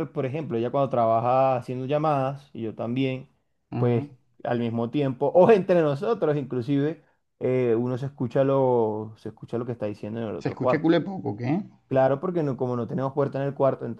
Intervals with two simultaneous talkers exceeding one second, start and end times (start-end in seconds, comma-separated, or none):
none